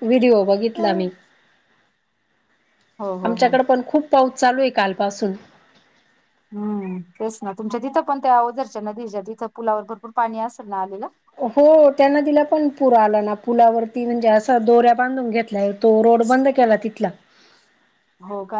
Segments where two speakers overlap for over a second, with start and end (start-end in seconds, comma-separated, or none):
none